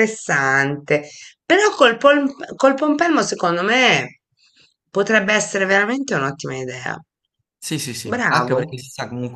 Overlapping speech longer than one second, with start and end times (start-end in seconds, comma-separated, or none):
none